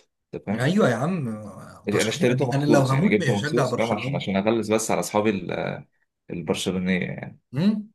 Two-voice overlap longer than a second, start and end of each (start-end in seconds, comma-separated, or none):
1.9-4.2